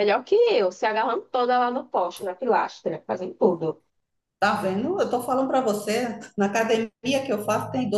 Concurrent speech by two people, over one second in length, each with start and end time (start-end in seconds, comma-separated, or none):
none